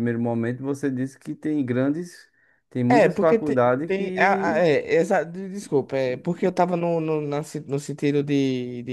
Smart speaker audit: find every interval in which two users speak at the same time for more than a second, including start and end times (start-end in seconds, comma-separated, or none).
2.9-4.6